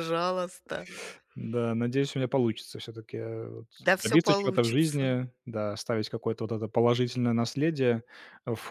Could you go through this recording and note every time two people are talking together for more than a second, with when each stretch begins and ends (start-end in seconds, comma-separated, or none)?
4.0-5.2